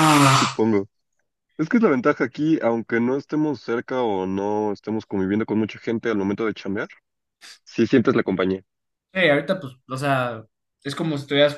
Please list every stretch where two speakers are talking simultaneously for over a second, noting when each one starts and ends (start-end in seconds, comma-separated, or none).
none